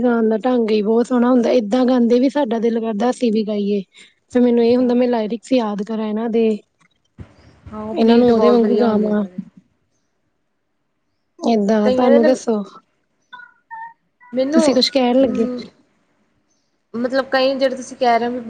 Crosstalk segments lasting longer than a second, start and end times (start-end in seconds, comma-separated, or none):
8.0-9.2